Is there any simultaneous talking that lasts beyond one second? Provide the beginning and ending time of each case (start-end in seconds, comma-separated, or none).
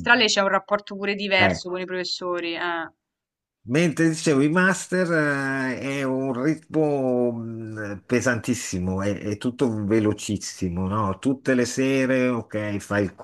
none